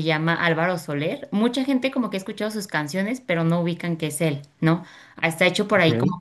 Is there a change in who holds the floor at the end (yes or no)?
no